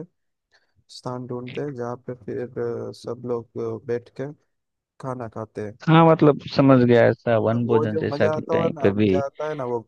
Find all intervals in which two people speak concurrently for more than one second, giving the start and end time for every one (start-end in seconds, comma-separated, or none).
7.5-9.1